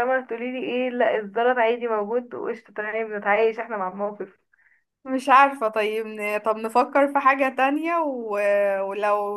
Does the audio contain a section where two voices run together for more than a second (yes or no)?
no